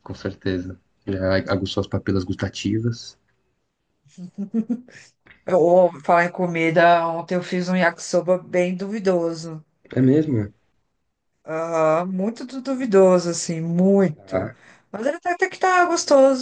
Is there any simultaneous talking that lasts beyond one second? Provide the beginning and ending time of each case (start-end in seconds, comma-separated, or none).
none